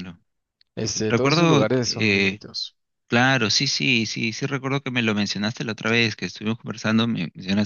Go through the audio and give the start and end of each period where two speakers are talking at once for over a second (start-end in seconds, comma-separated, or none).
1.1-2.4